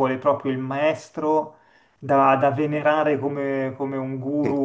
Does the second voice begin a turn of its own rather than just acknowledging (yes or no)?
yes